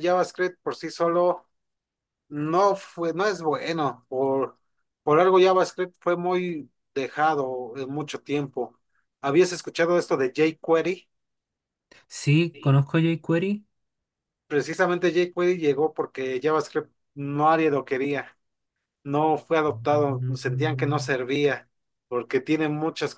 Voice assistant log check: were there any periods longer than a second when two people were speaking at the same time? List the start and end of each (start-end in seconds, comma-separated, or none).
19.7-21.1